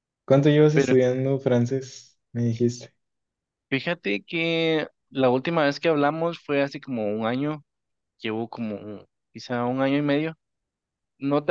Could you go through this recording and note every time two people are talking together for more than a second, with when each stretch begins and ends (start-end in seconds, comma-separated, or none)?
none